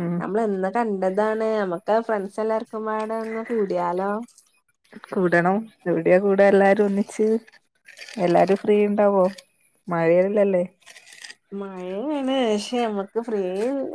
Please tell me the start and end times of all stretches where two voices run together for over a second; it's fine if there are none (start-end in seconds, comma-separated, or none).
none